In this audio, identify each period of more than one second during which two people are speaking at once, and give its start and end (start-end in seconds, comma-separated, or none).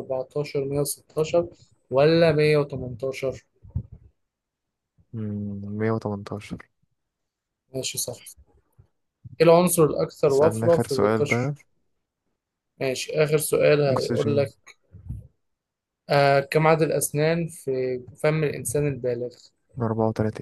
10.3-11.5